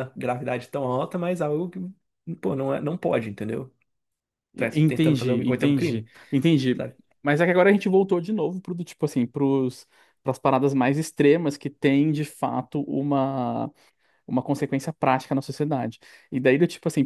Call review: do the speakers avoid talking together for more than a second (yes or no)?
no